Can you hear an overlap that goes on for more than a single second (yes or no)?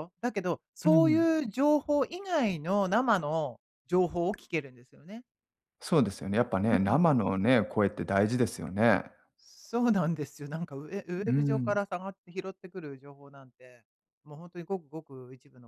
no